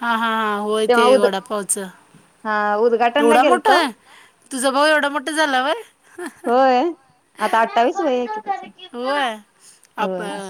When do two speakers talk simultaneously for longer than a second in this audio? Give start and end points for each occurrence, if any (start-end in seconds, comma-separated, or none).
none